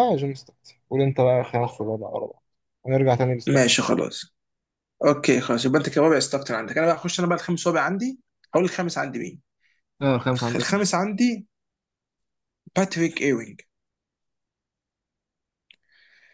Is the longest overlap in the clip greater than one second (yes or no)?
no